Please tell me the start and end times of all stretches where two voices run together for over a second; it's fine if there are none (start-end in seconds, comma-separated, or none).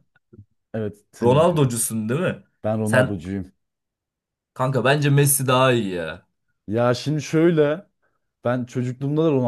none